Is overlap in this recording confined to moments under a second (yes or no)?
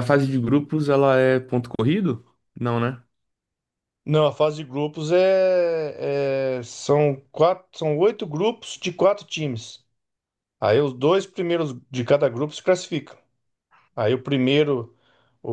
yes